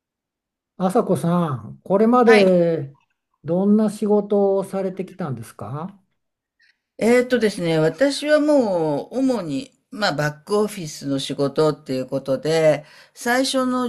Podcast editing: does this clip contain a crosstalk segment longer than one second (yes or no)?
no